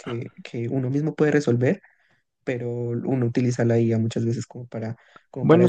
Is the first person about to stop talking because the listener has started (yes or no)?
no